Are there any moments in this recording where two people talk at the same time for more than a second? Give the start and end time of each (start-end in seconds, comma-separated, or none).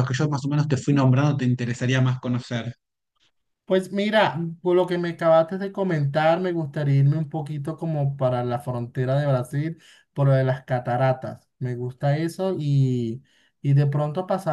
none